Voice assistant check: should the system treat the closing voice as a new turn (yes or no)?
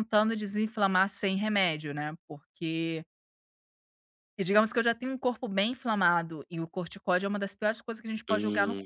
yes